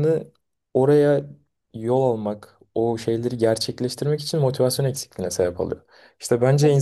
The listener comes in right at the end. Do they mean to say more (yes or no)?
no